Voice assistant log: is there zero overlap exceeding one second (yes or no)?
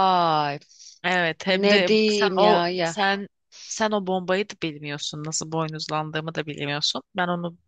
no